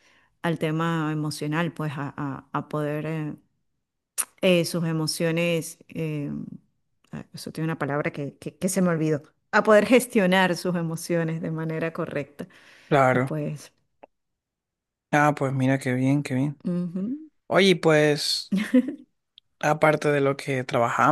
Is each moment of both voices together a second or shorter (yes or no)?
yes